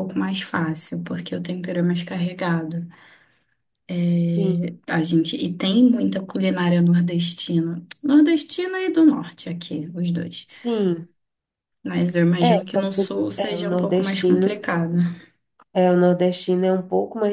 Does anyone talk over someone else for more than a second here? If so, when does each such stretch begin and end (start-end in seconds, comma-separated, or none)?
12.4-14.7